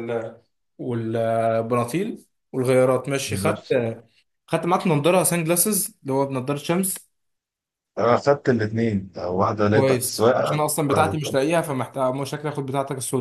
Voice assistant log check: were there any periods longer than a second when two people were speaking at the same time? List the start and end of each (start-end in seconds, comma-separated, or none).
9.7-11.4